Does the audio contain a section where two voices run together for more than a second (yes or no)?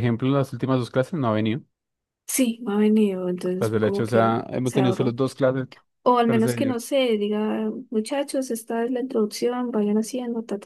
yes